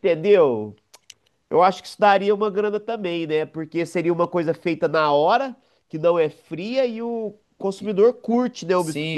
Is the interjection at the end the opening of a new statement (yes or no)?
yes